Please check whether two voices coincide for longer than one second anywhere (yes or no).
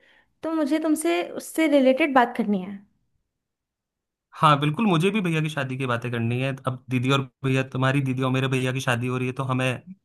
no